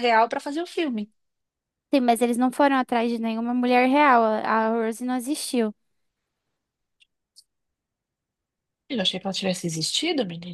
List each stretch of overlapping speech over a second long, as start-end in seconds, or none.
none